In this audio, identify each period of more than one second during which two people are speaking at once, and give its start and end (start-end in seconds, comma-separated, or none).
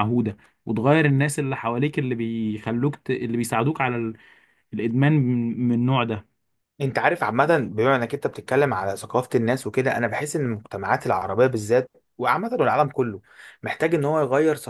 none